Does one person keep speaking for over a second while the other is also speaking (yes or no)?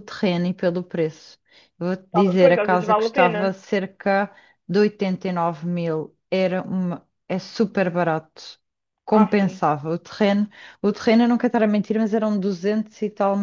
yes